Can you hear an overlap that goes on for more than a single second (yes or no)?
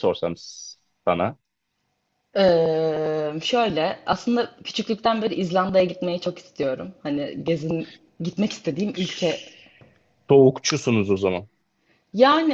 no